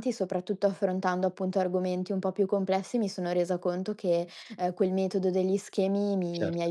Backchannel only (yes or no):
yes